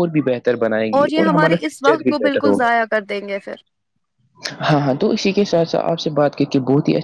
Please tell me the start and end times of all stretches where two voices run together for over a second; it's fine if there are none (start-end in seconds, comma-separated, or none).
1.1-2.7